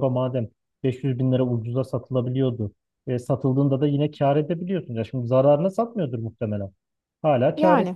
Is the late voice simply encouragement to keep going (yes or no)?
yes